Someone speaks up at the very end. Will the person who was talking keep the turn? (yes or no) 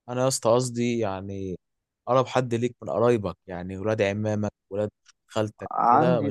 no